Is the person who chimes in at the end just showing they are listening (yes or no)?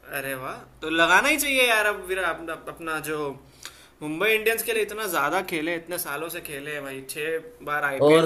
no